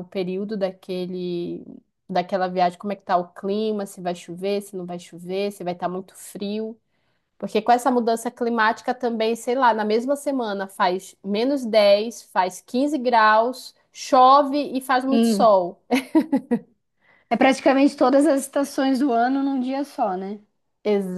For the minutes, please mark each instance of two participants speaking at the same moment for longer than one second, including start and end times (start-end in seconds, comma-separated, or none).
none